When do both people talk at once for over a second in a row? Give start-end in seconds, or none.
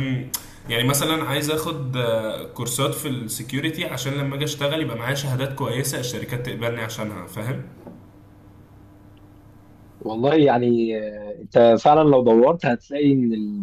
none